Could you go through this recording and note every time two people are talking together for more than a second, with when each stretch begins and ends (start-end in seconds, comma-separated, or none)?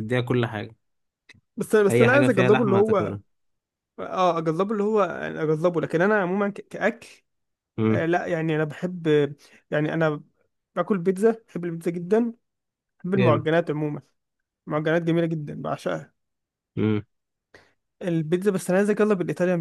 1.9-3.1